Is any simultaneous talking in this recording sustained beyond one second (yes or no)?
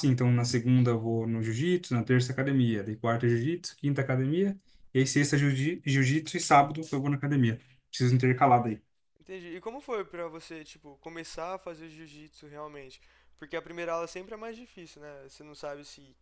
no